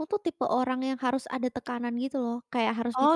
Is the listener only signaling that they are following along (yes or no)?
yes